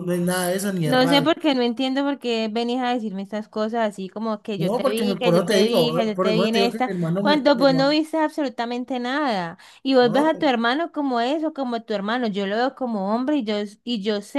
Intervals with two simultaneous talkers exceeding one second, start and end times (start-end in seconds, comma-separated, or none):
4.6-7.9